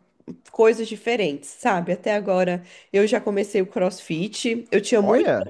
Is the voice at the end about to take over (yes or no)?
no